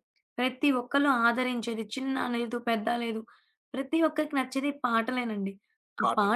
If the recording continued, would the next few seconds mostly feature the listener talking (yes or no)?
no